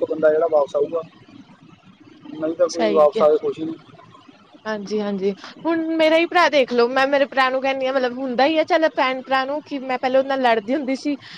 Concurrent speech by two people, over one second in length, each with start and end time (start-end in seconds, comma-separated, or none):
none